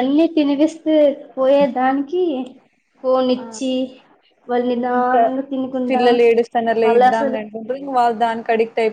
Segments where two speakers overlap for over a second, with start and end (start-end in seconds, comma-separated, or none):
none